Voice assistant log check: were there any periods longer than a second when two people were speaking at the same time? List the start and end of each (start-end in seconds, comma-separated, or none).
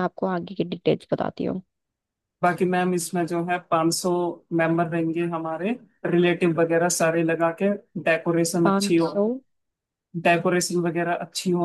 none